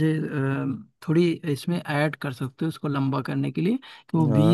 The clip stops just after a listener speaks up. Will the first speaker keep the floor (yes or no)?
yes